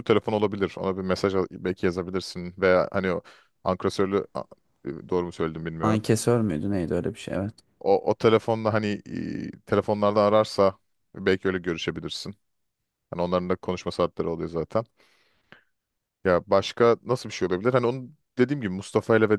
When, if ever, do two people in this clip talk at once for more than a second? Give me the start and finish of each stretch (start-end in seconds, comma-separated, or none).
none